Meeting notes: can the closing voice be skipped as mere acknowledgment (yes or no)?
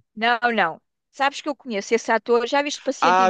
no